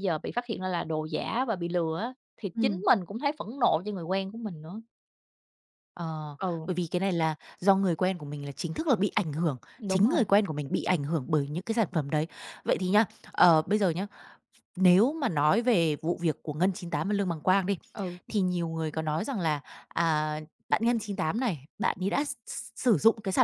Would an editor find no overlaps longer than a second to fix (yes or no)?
yes